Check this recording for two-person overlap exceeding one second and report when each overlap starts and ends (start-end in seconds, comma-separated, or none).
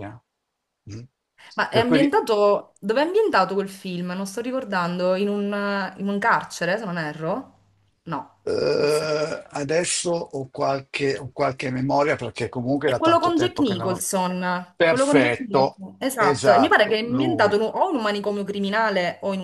12.8-14.1, 14.8-17.6